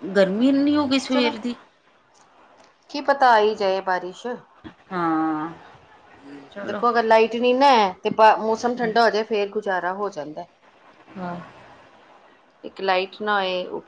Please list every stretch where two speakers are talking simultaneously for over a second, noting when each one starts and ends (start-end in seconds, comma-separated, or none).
none